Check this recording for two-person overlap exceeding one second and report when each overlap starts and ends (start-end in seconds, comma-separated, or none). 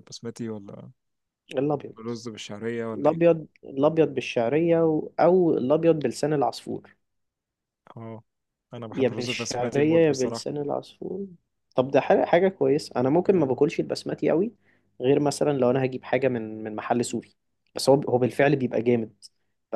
8.9-10.4